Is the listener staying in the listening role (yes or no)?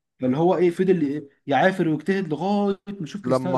yes